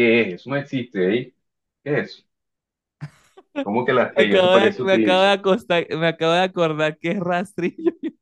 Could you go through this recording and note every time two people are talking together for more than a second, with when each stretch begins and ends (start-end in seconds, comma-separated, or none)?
4.1-5.3